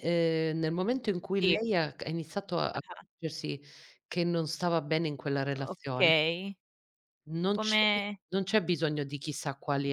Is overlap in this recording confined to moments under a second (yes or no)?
yes